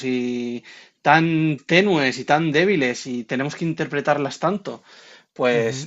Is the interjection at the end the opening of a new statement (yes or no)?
no